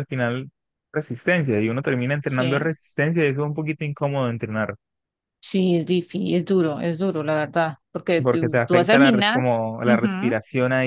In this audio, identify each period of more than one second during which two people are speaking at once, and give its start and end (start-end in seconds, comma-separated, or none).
8.2-10.3